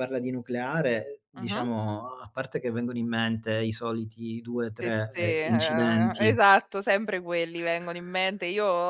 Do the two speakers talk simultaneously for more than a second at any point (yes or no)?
yes